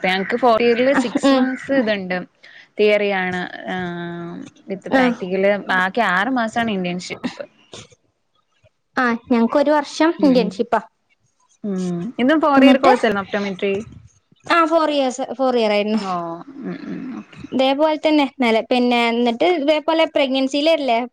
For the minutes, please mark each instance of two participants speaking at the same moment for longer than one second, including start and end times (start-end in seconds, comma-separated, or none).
none